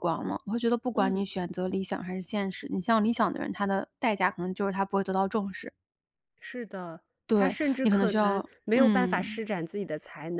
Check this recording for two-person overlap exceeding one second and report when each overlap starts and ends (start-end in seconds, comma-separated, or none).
7.3-9.4